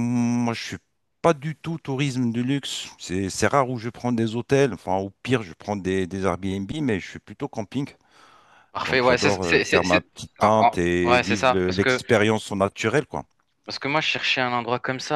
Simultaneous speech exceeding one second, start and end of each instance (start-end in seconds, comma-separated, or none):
8.8-12.0